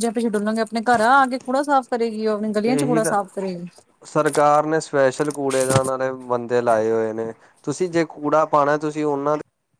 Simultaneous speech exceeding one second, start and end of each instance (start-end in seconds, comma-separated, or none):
none